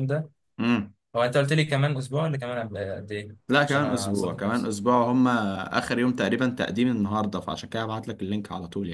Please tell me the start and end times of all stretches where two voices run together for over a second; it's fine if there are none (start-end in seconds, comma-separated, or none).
3.5-4.7